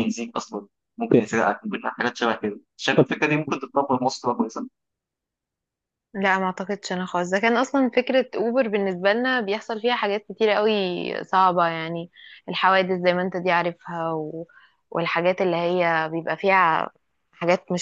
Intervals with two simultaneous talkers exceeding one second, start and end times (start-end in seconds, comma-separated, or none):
none